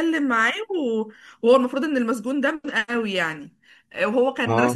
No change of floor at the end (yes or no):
yes